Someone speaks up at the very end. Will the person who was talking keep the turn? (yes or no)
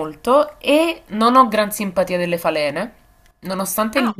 yes